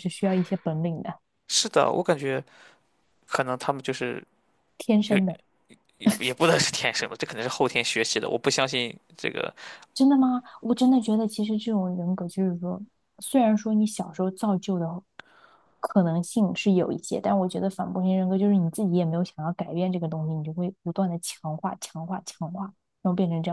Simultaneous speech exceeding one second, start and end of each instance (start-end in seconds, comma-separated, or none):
none